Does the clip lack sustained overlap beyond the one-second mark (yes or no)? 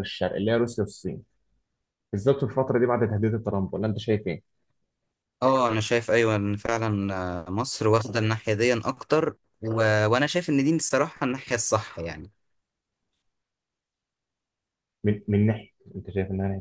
yes